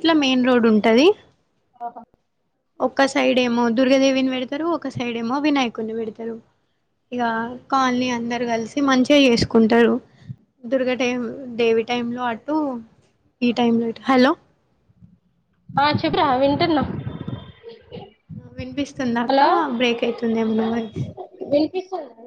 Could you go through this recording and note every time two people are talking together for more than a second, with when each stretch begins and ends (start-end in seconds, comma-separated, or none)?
none